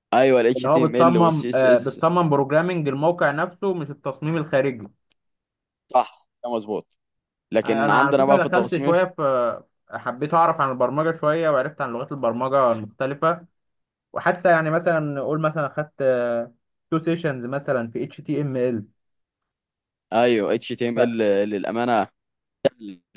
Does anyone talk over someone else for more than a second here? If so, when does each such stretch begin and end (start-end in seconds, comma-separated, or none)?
0.6-2.0, 7.6-9.0